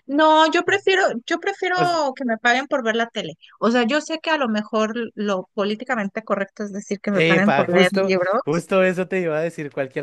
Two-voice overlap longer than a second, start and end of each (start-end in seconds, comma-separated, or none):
7.1-8.7